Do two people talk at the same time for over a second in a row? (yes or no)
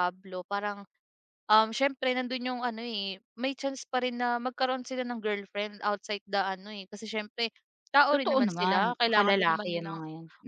yes